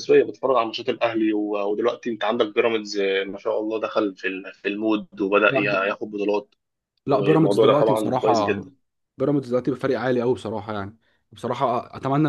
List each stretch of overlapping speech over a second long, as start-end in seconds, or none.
7.1-8.7